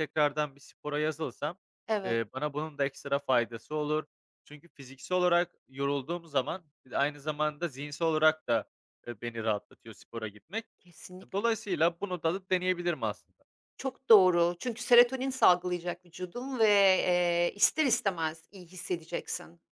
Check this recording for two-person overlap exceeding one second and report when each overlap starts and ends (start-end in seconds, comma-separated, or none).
none